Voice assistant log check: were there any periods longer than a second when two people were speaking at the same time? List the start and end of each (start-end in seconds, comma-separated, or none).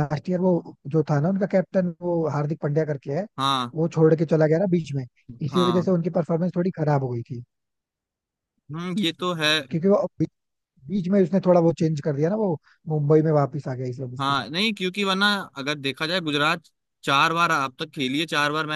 none